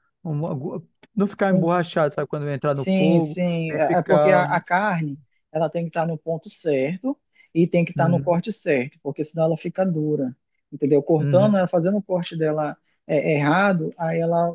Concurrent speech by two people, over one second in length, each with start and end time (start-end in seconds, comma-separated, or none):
2.7-4.4